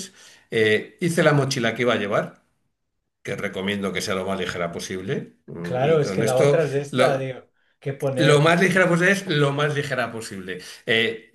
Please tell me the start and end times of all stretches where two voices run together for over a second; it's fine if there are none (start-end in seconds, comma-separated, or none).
5.6-7.3